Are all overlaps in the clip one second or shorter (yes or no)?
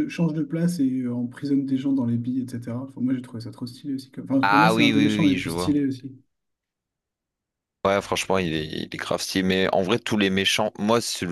no